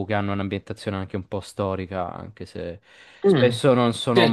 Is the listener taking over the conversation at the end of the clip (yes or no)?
yes